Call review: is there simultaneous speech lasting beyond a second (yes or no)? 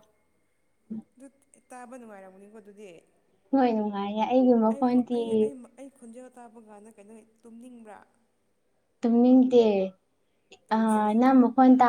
no